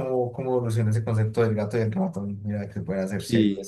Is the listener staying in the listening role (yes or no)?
no